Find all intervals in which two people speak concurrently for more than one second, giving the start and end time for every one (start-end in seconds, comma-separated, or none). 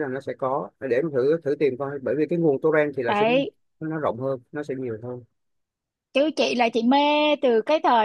none